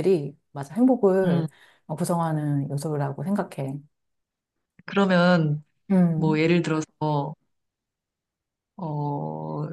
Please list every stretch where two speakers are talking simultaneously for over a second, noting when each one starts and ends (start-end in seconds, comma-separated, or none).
none